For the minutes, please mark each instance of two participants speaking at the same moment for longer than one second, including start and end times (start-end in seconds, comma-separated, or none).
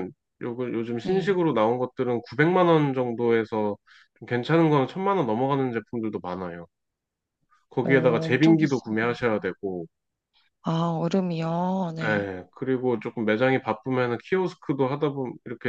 7.8-9.2